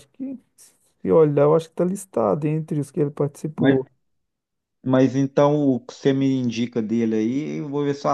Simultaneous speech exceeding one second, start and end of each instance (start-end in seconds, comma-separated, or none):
none